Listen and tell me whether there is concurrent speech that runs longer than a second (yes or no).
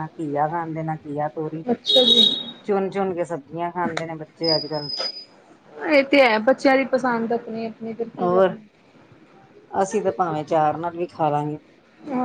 no